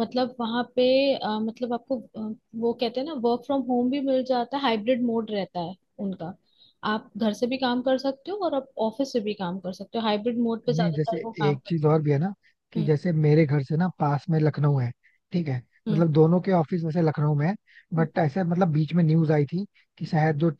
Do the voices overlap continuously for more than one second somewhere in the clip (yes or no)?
yes